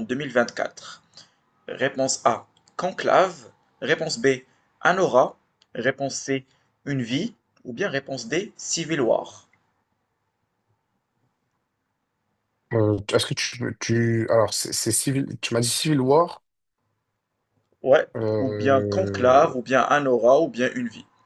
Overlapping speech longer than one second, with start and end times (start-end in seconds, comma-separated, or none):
18.1-19.6